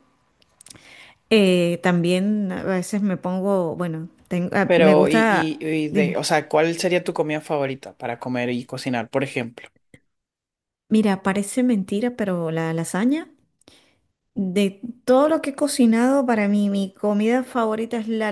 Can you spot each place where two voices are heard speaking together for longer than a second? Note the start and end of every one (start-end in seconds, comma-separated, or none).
4.7-6.2